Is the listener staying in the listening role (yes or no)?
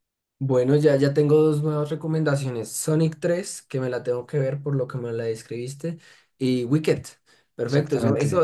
yes